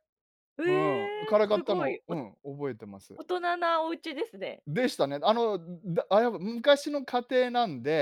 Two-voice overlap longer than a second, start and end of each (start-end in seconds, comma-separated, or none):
0.7-2.2